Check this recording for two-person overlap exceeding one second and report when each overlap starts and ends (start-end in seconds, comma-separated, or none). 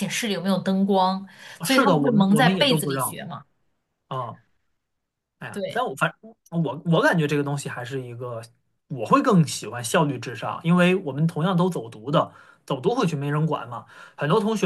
1.6-3.2